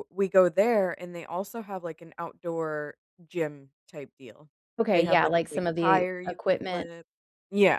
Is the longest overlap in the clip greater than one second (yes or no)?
yes